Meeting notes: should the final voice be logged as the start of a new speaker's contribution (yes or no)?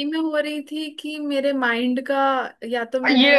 yes